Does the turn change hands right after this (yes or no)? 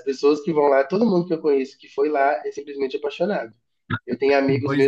no